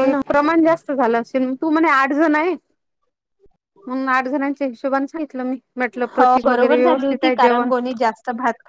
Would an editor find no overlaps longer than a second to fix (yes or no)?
no